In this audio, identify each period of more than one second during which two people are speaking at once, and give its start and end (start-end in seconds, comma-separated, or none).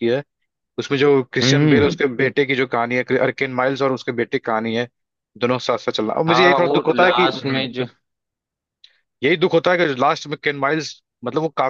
6.3-7.7